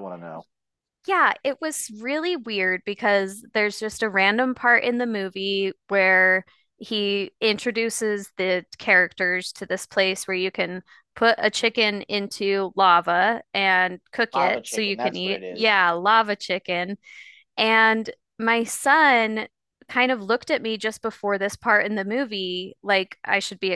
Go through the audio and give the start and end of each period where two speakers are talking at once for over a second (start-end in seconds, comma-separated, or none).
14.3-15.8